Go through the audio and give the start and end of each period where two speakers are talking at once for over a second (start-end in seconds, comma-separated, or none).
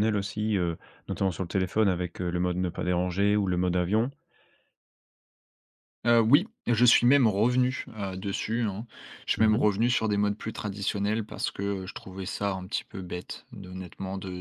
none